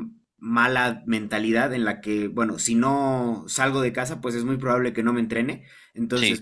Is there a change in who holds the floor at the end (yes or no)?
no